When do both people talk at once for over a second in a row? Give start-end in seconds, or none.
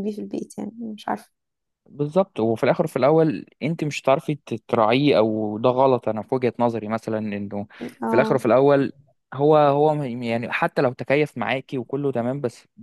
none